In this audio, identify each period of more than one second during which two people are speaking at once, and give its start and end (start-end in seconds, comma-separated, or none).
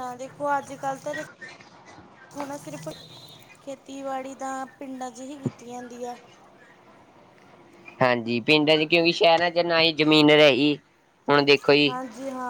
none